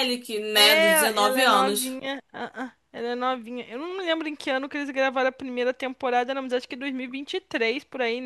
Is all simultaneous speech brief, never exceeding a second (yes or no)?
no